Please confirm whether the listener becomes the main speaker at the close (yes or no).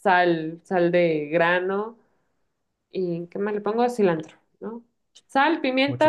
no